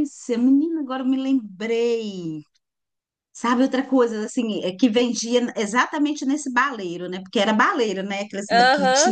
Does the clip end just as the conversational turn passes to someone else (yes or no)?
yes